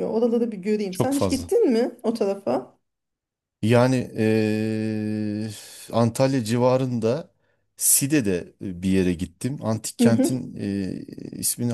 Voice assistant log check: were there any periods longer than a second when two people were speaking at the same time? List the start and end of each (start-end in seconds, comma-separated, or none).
none